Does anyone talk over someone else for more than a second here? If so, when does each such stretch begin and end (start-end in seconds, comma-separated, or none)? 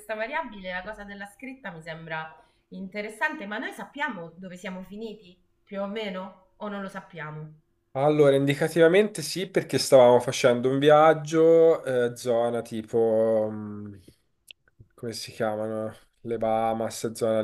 none